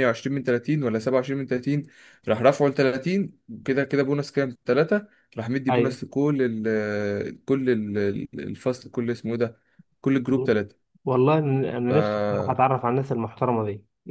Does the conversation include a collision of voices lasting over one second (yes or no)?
no